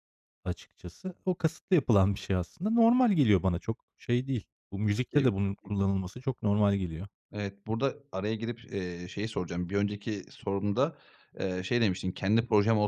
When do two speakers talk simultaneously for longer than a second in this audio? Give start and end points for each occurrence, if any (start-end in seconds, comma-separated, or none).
none